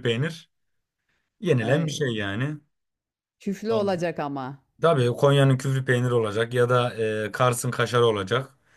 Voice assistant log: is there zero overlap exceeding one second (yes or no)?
yes